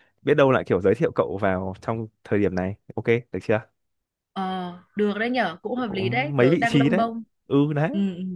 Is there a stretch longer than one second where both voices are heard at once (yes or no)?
yes